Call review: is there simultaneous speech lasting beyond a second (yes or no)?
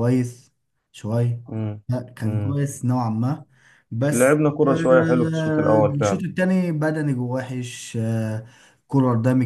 yes